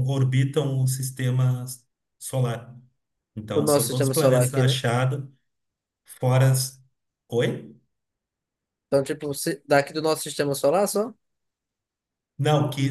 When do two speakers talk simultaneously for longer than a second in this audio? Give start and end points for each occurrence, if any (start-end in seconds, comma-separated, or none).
3.5-4.8